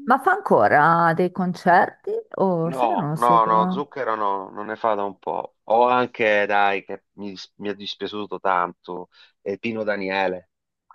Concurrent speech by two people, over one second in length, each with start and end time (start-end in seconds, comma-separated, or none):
2.6-3.8